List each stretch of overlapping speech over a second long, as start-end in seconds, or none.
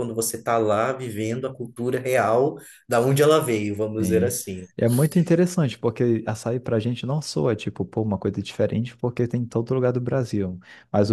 none